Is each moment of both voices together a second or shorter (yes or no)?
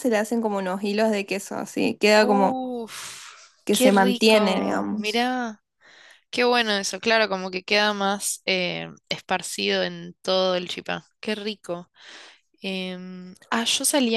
no